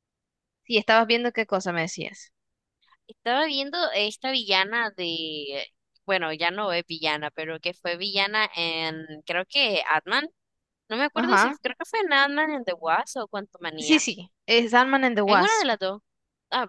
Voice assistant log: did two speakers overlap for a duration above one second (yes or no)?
no